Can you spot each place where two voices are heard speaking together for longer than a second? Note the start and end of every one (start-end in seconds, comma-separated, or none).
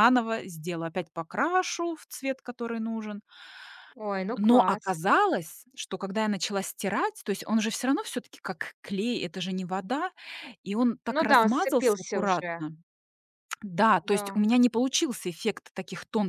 11.1-12.6